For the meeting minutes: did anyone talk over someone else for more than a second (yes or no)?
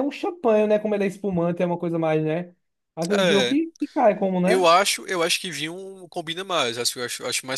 no